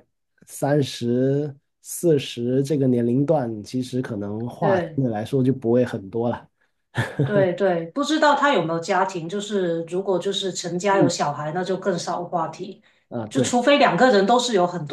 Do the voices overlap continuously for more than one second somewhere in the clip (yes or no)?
no